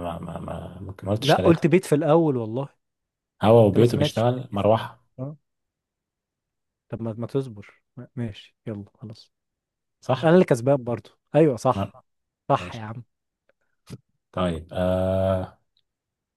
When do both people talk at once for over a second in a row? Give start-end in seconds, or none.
3.7-5.0